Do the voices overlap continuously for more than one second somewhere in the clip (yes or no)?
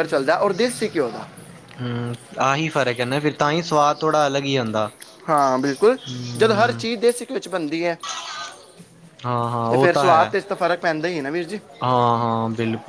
no